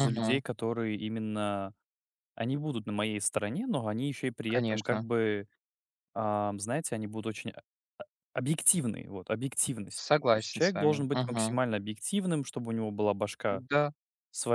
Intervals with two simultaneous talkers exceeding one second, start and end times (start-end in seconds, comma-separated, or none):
9.9-11.6